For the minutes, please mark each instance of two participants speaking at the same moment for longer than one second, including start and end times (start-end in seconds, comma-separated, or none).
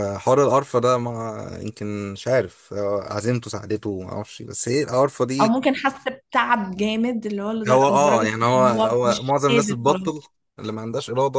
7.7-10.1